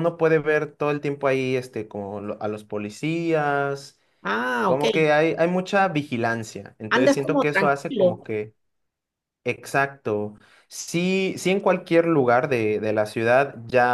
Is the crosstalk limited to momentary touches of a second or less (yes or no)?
no